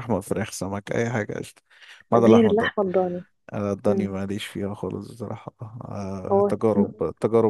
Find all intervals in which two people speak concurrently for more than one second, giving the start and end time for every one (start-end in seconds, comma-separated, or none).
none